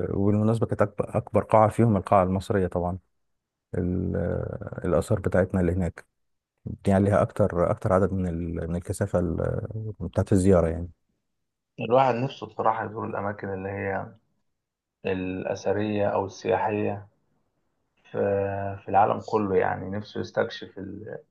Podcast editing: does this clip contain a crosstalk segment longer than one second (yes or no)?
no